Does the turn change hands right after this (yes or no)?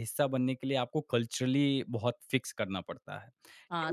yes